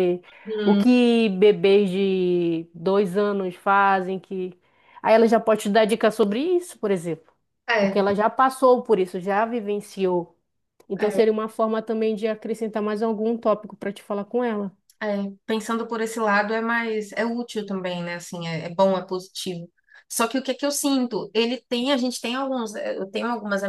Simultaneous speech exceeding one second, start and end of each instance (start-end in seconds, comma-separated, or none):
none